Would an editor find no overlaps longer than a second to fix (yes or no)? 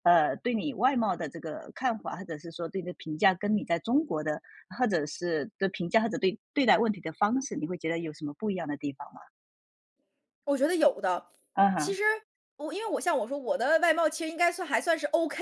yes